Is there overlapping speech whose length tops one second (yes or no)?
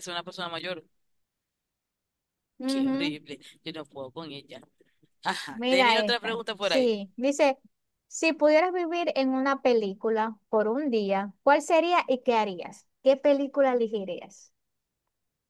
yes